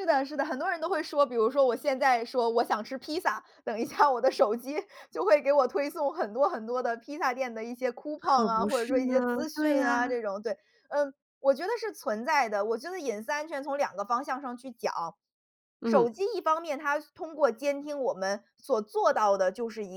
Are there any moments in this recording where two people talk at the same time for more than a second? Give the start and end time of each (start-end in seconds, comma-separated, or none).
8.2-10.2